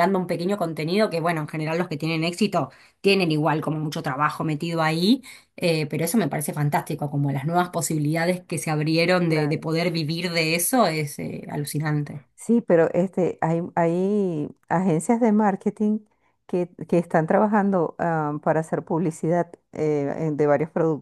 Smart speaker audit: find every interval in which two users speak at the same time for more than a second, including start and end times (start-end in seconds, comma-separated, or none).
none